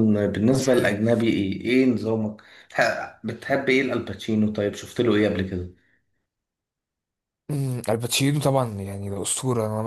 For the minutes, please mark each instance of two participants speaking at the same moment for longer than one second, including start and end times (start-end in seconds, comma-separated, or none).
none